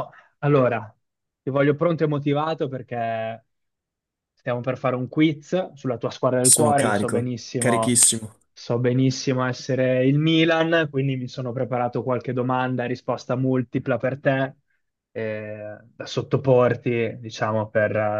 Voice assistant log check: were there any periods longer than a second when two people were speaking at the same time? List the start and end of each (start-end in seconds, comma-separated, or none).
6.4-8.0